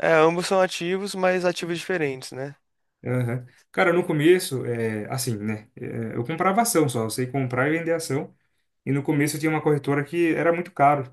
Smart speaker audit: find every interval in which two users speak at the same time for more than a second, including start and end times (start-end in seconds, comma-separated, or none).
none